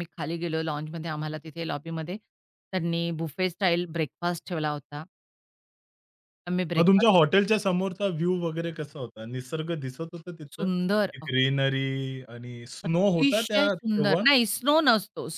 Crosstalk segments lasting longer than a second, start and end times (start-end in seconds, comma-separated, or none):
12.9-14.2